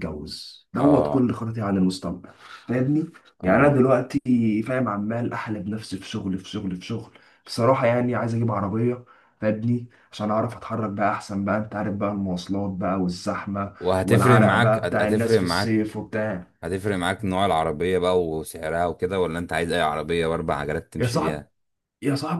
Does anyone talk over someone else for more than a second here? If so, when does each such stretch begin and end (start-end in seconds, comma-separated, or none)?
13.8-16.0